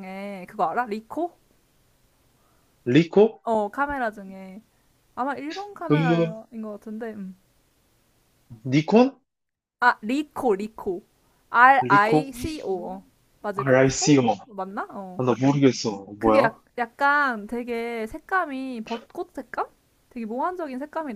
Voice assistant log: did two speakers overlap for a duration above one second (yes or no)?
yes